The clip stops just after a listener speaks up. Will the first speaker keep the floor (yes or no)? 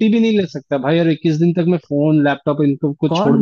no